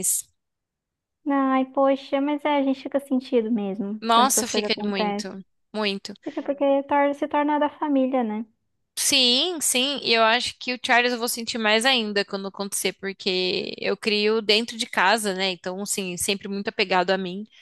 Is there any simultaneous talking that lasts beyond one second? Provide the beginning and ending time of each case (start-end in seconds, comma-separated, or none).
4.0-5.3